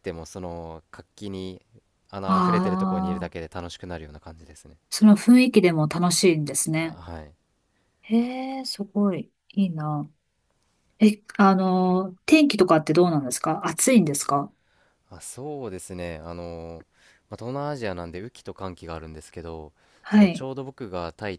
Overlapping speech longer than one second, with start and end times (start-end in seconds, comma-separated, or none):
2.2-3.5